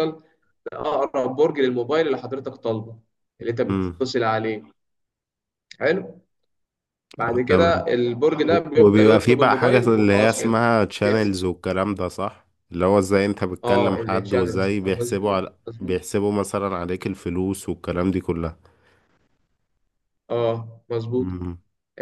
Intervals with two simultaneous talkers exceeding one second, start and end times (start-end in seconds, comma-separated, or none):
8.5-11.4, 13.6-16.0